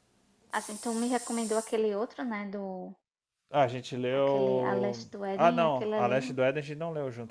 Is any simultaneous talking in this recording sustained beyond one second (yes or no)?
yes